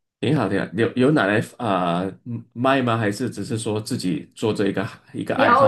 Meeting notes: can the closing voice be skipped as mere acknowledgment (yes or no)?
no